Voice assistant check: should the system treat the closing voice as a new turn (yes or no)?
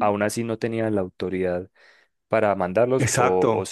yes